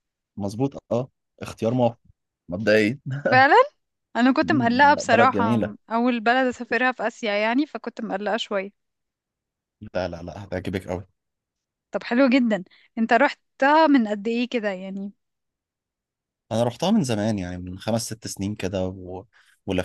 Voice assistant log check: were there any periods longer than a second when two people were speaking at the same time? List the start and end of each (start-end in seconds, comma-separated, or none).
4.4-5.8